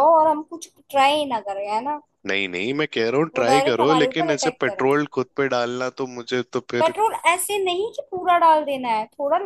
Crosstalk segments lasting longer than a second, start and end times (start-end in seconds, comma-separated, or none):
3.3-4.9